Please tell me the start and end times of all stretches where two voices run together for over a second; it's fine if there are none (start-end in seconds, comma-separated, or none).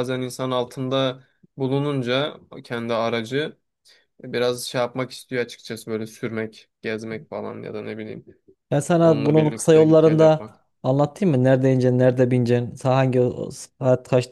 9.0-10.5